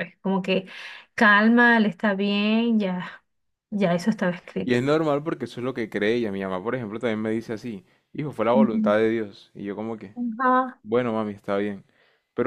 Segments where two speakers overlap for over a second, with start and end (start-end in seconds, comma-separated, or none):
none